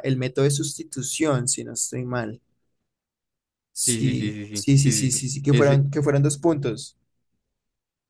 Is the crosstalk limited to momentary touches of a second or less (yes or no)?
no